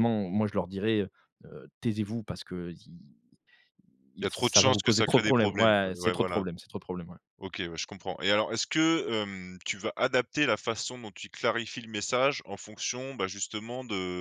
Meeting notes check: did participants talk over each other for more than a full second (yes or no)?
yes